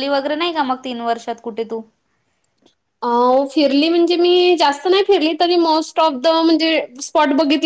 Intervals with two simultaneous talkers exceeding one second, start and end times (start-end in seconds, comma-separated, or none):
none